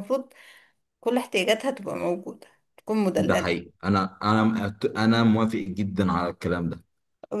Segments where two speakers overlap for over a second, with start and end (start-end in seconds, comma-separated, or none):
none